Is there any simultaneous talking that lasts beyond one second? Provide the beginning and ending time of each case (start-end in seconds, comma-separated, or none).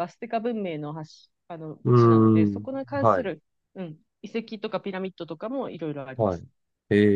1.8-3.3